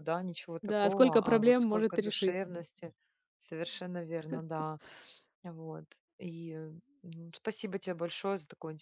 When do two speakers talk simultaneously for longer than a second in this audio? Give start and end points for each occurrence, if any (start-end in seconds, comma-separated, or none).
0.6-2.4